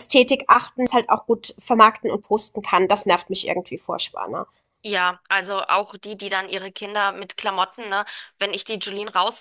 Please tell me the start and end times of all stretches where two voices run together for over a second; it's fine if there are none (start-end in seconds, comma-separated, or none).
none